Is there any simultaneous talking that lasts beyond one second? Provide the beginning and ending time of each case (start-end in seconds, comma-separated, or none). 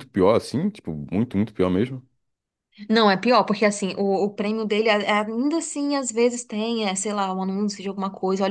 none